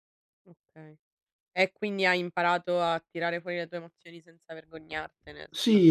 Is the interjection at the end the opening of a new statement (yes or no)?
yes